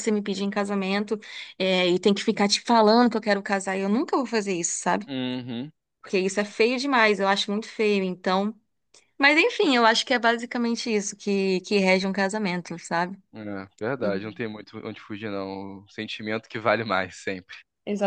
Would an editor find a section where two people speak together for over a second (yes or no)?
no